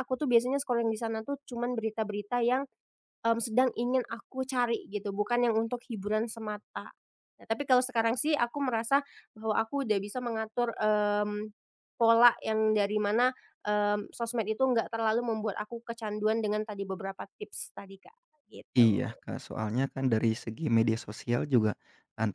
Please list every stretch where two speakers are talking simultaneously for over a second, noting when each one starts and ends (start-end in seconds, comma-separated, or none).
none